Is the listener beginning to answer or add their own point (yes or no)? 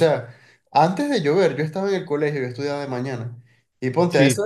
no